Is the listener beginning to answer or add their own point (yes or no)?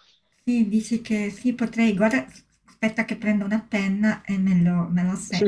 yes